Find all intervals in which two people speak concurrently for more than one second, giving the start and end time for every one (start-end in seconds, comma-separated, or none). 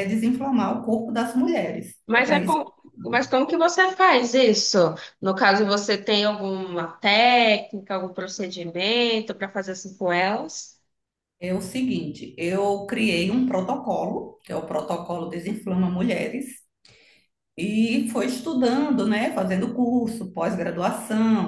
none